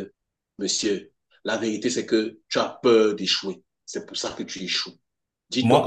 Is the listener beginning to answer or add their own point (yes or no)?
no